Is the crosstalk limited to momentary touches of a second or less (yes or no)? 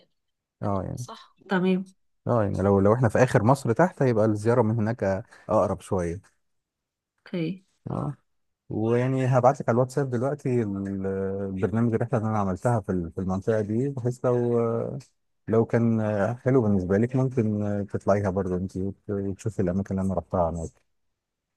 yes